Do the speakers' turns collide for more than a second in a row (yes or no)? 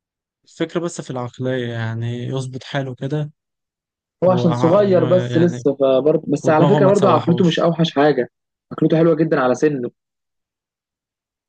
yes